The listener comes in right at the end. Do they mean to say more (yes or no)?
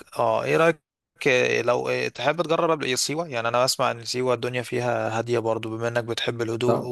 no